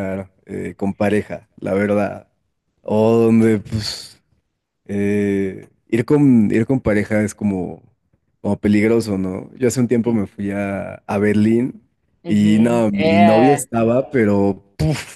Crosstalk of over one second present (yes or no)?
yes